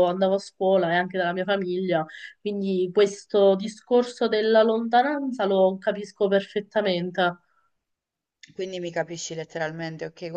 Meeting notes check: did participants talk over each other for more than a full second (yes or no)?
no